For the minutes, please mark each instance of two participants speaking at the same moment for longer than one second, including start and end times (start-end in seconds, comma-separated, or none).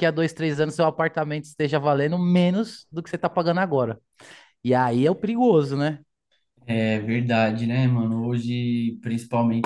none